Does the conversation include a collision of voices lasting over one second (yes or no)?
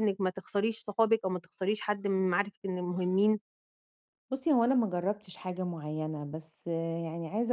no